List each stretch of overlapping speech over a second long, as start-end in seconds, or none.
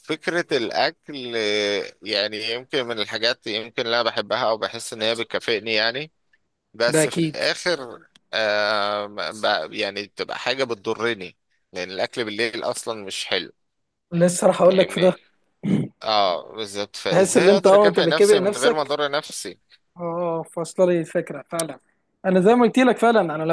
17.1-18.9